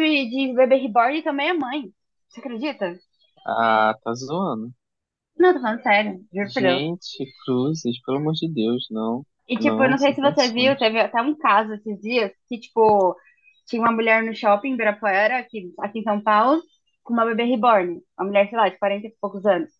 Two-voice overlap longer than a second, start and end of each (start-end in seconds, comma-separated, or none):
9.5-10.9